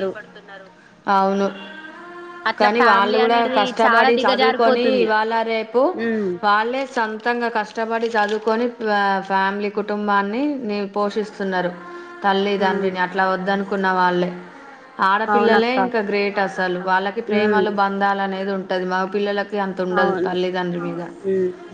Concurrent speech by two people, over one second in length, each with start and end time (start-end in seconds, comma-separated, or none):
2.6-5.1